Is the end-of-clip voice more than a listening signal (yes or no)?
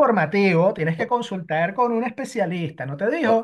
yes